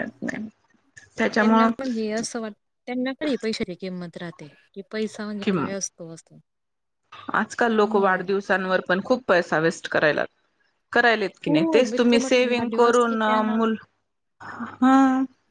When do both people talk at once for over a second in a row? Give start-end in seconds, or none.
11.5-13.4